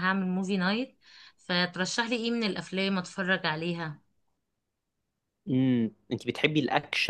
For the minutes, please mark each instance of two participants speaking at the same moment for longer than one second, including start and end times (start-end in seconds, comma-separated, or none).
none